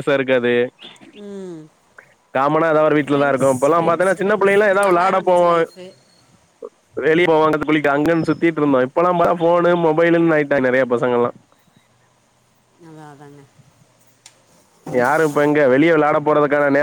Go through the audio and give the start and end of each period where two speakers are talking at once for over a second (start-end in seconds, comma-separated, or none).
3.1-5.6